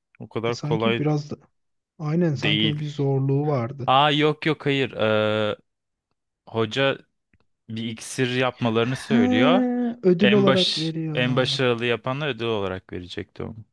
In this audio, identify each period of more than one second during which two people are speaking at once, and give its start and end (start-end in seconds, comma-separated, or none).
10.2-11.5